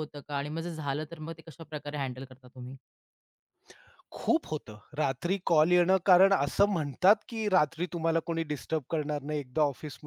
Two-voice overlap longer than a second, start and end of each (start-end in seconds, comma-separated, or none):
none